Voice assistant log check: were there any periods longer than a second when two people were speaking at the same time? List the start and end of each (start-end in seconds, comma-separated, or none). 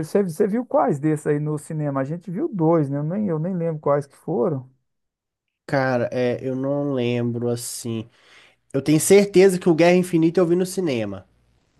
none